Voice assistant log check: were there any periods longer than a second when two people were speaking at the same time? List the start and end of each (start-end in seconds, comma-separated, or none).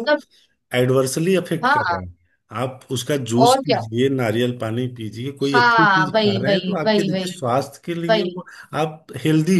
5.5-7.3